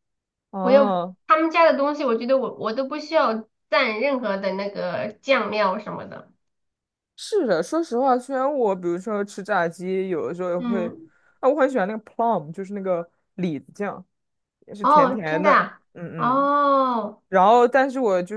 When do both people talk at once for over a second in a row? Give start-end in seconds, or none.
14.8-16.5